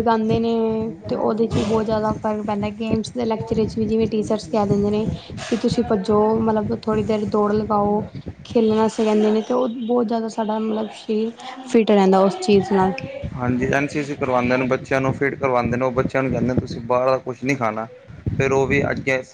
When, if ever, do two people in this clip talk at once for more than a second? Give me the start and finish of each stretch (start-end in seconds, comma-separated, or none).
none